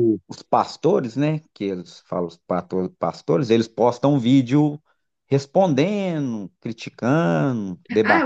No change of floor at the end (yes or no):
no